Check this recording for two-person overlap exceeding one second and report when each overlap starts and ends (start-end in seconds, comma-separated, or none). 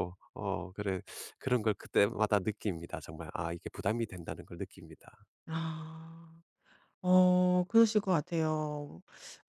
none